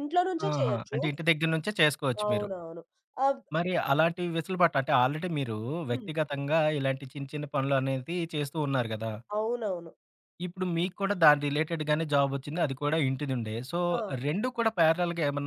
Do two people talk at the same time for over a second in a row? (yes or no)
no